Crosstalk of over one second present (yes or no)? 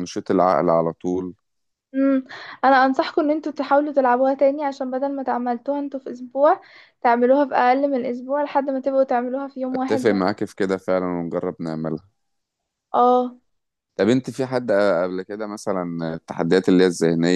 no